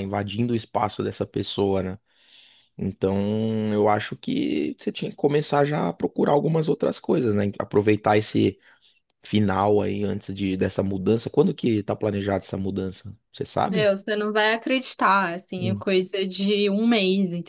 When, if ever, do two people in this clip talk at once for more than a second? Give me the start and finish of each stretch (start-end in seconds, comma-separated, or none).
none